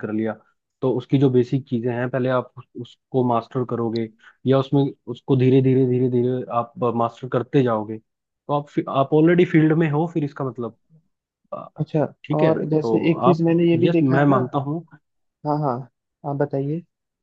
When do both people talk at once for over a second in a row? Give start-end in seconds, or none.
12.4-14.4